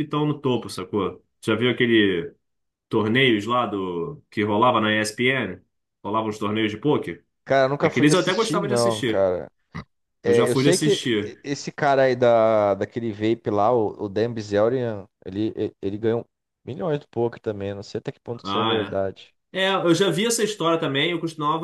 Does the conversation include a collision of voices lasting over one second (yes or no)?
yes